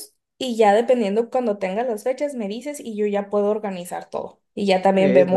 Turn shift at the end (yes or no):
no